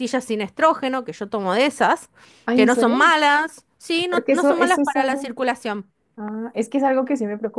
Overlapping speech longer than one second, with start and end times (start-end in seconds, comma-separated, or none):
4.1-5.3